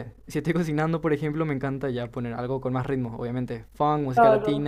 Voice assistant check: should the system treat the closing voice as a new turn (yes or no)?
yes